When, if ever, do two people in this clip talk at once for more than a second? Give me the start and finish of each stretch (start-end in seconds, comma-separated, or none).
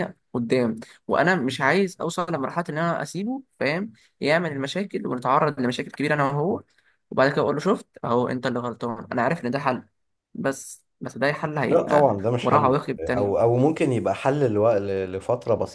11.7-13.3